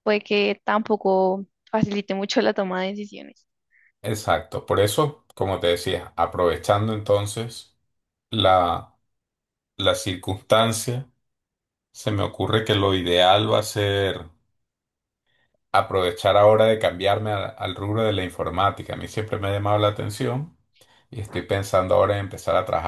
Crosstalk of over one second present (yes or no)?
no